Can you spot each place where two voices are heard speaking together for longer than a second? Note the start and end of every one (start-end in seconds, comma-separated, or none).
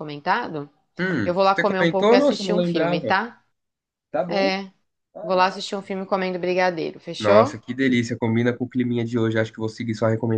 1.2-3.2